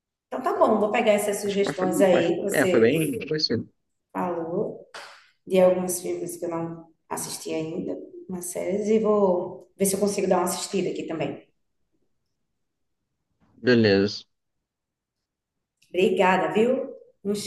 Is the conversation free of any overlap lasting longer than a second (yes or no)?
no